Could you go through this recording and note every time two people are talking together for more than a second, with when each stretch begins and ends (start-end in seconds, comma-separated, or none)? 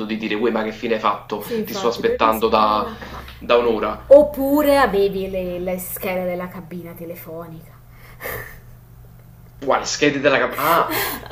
1.4-2.9